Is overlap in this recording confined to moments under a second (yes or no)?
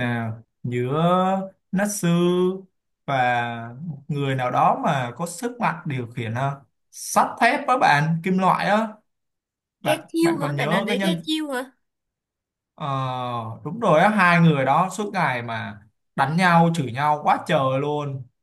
no